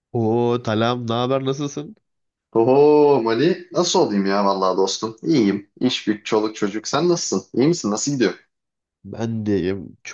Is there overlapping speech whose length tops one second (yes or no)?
no